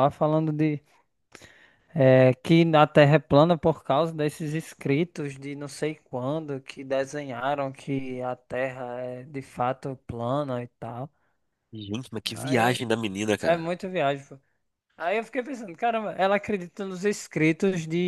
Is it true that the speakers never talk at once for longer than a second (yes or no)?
yes